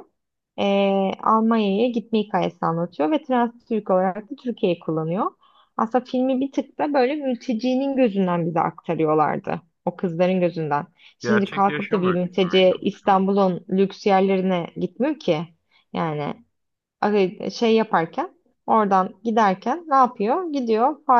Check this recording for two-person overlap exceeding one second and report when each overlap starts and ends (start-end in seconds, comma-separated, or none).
11.2-13.3